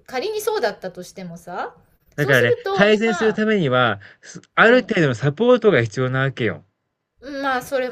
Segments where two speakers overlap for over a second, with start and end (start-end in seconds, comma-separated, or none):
2.1-3.4